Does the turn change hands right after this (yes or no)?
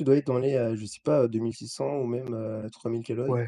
yes